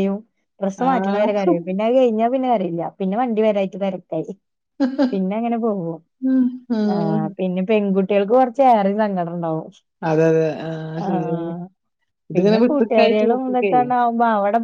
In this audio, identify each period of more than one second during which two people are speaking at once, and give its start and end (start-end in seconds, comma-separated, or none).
12.3-13.7